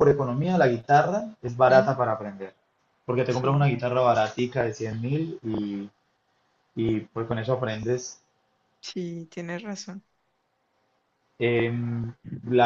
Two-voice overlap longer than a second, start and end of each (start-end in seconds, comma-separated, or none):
none